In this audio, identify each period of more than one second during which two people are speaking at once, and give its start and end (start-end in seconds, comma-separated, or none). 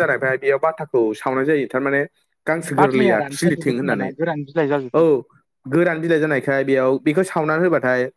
2.8-4.1